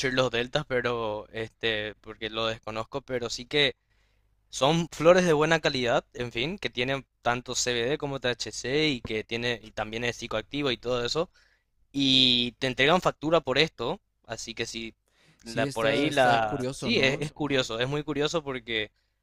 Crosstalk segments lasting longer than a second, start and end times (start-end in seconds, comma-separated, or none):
15.4-17.3